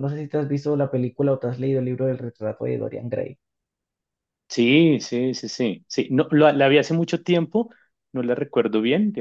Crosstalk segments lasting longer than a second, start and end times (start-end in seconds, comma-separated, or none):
none